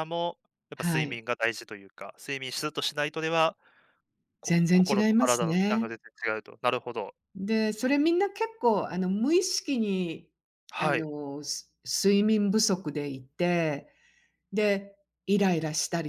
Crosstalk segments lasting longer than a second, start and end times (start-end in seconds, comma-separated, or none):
4.4-5.9